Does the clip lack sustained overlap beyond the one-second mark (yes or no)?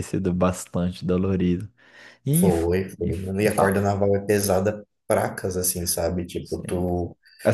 no